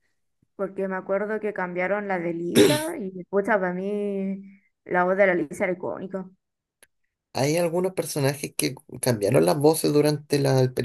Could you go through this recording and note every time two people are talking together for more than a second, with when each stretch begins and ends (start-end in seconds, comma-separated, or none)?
none